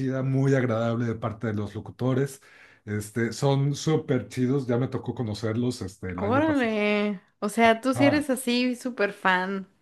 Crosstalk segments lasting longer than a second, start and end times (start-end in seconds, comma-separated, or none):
none